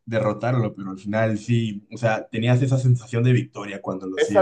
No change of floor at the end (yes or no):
no